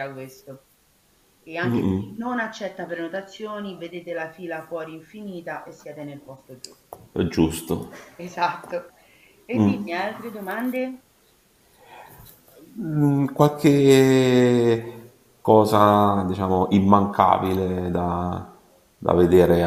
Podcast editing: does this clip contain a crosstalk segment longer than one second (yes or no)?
no